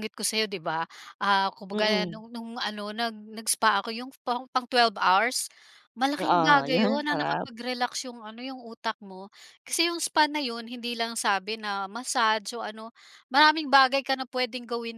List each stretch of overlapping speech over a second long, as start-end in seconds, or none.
6.2-7.5